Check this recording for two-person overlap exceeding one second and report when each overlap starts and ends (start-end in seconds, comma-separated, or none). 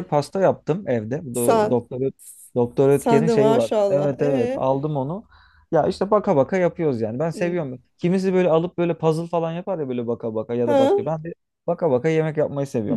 2.9-4.7